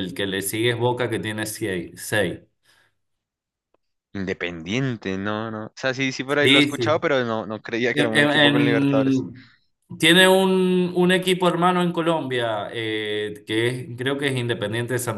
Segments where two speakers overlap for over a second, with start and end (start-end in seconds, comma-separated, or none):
7.9-9.2